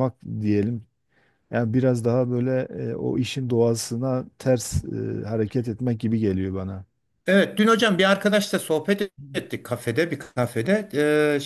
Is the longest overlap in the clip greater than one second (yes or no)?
no